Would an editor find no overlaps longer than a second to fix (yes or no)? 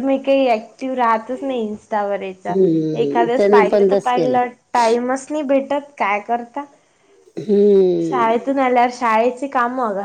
no